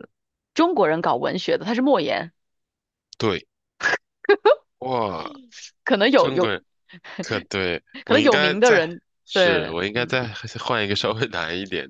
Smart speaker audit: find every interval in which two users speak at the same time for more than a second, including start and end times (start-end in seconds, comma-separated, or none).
8.1-10.2